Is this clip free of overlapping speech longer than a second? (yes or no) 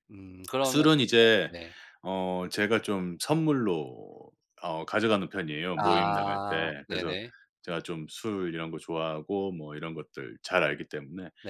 no